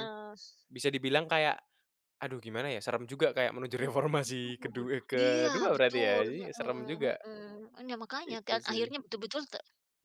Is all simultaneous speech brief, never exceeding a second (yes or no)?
no